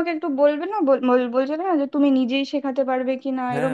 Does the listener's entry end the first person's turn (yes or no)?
yes